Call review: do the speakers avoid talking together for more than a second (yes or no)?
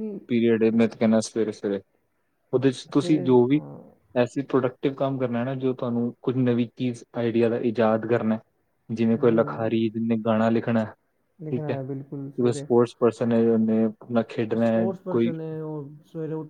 yes